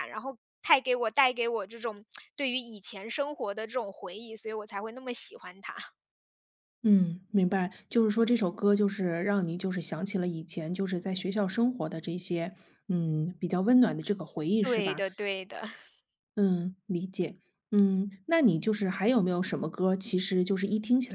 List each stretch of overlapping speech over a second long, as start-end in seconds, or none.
none